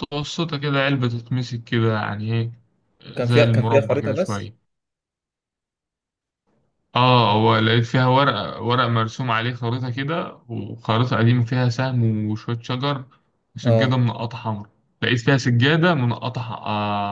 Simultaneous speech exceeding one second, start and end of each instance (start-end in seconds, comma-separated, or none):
3.2-4.5